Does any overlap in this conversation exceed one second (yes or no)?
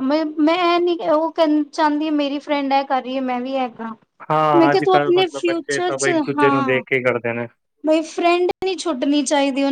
yes